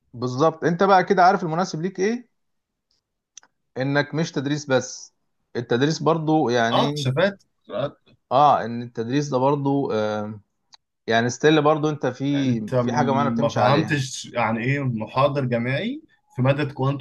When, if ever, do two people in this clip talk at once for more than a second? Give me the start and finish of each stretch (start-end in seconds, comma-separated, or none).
12.8-14.0